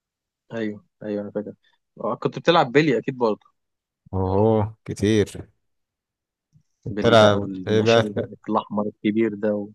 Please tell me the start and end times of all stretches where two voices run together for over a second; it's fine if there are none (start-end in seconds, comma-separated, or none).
6.9-8.3